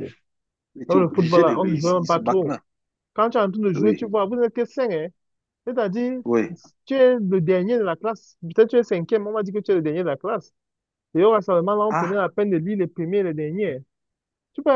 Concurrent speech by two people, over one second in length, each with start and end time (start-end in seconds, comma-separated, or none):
0.9-2.6